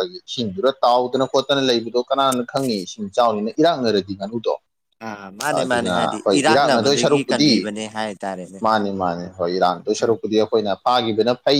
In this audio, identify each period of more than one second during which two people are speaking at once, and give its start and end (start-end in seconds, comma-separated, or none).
5.6-7.5